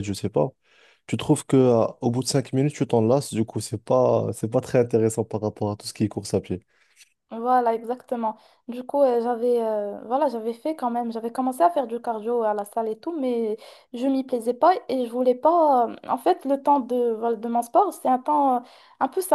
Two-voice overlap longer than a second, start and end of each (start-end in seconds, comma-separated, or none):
none